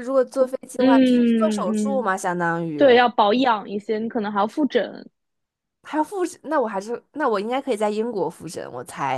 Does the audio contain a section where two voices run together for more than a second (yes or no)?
yes